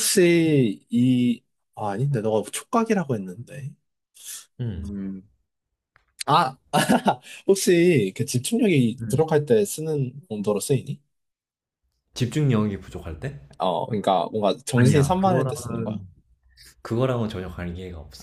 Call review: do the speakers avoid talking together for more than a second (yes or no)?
no